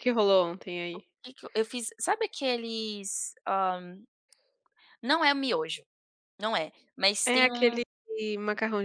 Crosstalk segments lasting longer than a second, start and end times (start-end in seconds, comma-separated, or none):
none